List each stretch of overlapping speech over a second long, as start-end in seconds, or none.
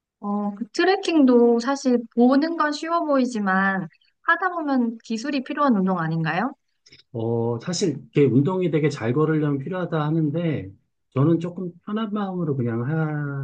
none